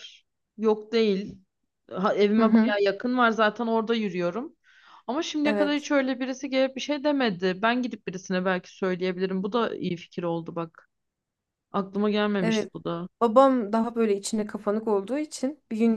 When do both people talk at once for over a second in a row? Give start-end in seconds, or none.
none